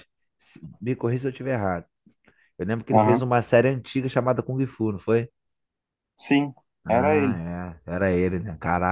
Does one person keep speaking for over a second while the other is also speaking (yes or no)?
no